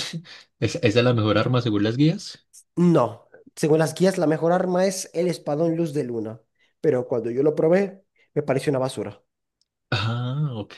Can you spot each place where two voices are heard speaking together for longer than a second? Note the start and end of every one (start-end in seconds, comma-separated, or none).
none